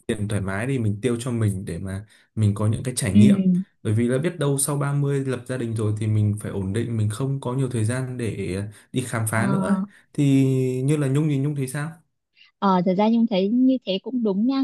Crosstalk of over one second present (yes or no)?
no